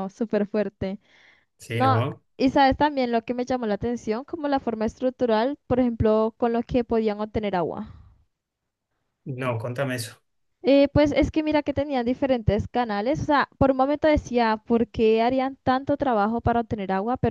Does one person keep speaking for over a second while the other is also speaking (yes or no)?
no